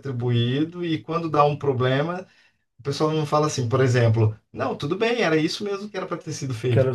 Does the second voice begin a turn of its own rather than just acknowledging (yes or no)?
yes